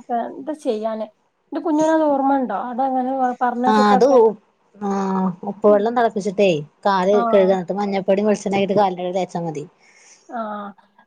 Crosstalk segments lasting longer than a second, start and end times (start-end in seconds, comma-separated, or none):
none